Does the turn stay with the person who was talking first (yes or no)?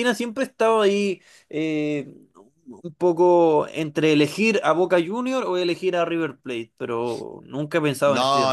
no